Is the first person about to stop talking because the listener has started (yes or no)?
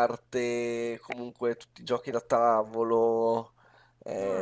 yes